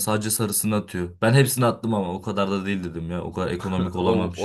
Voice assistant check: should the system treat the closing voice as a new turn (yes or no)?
yes